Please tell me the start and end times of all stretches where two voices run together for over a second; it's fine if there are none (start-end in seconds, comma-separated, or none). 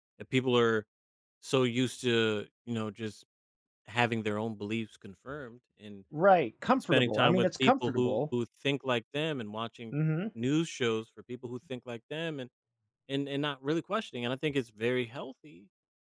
6.8-8.4